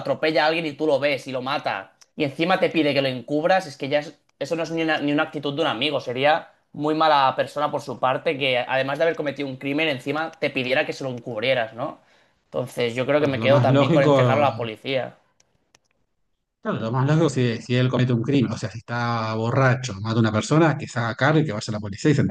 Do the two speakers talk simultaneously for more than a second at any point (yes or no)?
yes